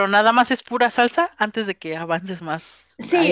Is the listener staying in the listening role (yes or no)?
no